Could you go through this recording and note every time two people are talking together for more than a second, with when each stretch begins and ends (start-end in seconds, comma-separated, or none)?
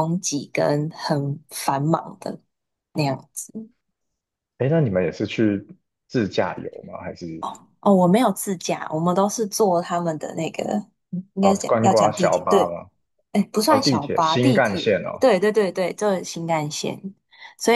11.4-12.8, 13.7-15.2